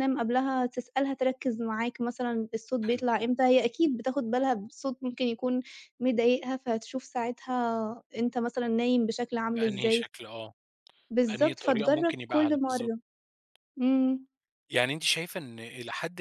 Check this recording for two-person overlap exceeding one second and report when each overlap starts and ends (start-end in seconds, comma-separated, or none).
11.3-12.9